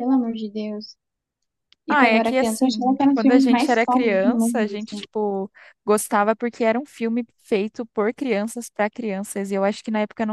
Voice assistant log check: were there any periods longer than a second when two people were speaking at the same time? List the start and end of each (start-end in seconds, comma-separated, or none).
1.9-4.7